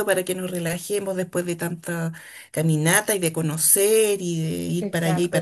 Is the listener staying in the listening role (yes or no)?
yes